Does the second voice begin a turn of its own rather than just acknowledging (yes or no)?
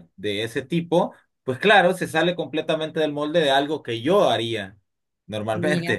no